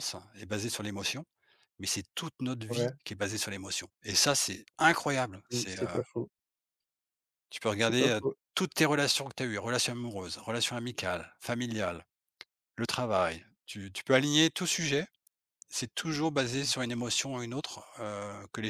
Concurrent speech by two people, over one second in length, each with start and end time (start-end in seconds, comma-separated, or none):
none